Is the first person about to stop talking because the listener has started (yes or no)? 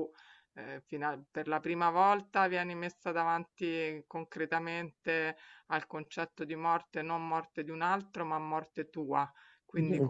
no